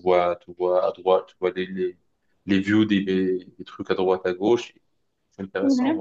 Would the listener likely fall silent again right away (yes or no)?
yes